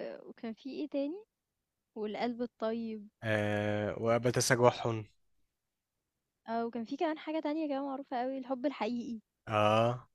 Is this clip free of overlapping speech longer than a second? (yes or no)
yes